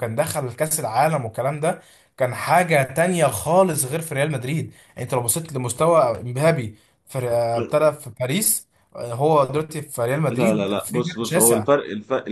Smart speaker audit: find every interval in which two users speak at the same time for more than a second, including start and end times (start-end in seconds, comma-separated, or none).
10.3-11.7